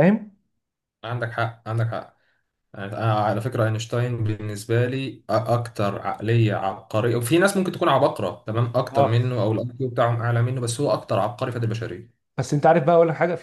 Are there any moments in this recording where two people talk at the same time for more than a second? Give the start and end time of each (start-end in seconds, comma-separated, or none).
none